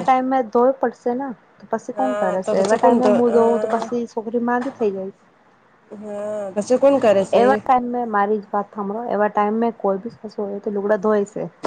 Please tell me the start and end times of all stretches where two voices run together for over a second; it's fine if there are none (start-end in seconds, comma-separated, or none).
1.9-3.8